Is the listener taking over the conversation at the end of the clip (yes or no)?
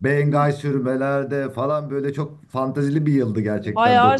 yes